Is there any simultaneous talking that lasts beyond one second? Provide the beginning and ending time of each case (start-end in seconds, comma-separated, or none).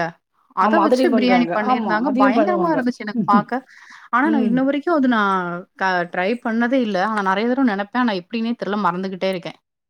0.7-2.8